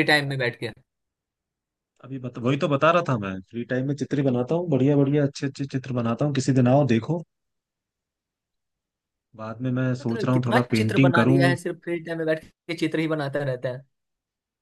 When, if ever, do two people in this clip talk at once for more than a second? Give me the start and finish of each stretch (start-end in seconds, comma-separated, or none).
10.0-11.6